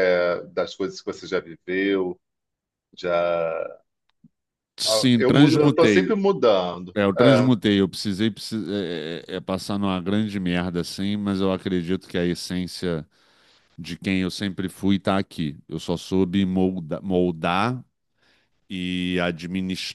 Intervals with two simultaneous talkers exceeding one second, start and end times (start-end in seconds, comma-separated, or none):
4.8-6.2